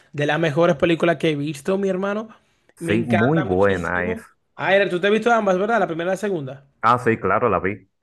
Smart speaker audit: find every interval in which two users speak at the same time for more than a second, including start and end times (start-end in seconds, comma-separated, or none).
2.8-4.2